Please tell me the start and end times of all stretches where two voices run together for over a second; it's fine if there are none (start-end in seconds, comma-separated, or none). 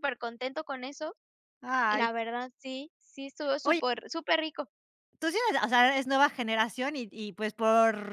none